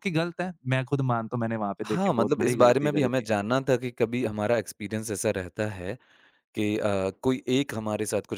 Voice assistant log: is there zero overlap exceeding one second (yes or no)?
no